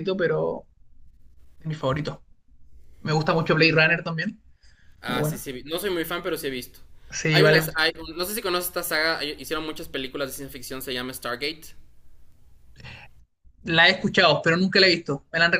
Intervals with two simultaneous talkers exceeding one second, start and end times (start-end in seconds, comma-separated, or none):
none